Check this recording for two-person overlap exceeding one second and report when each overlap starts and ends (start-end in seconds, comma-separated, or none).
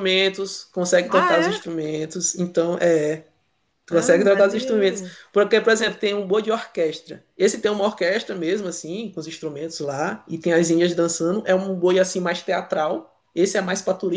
3.9-5.1